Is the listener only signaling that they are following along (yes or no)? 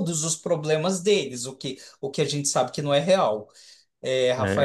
yes